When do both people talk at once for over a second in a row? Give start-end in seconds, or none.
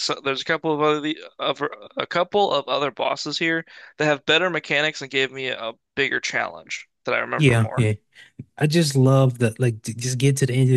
none